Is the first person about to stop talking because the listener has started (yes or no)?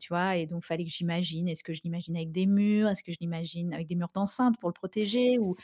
yes